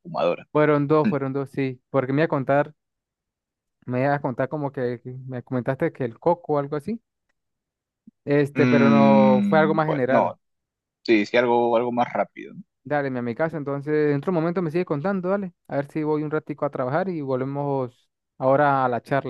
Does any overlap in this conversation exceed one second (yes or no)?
yes